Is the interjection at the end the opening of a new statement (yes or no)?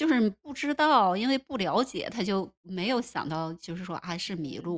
no